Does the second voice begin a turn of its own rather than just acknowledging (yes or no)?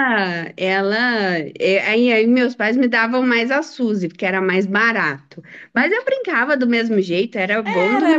yes